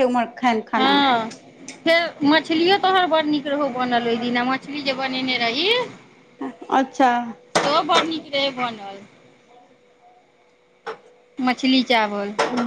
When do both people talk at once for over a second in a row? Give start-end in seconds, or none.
none